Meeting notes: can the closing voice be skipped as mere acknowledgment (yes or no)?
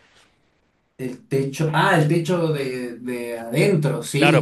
no